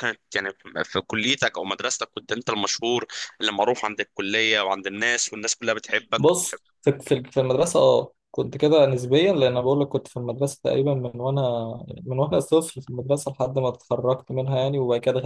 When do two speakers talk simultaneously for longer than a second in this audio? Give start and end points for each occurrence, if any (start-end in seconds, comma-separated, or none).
none